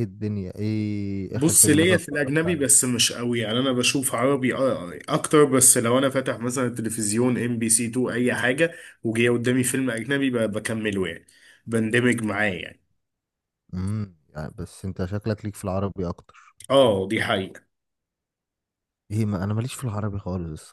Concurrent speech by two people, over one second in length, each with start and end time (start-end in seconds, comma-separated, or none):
1.3-2.7